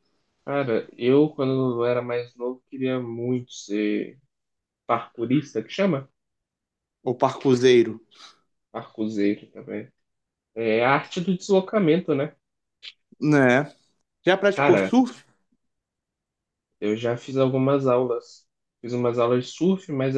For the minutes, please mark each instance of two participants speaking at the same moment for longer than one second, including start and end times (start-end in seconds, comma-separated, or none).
none